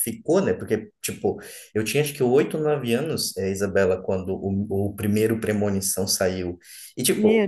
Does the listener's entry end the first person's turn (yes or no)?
no